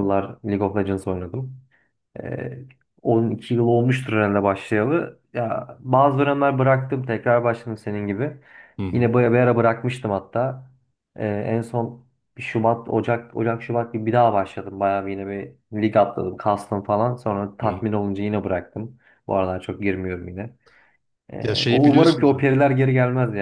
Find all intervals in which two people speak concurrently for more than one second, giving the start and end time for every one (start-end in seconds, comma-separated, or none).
21.4-22.6